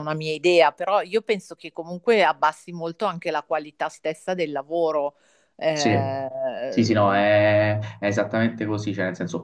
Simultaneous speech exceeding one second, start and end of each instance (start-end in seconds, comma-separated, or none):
none